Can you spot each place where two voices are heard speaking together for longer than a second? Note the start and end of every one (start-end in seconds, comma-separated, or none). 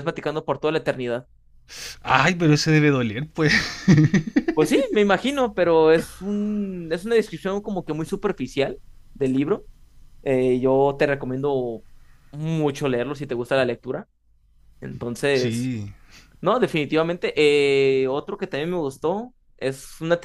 none